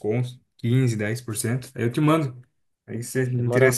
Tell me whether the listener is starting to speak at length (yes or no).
yes